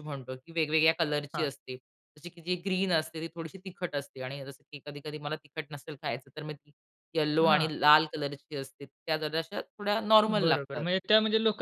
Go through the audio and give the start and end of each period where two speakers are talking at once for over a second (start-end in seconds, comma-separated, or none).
none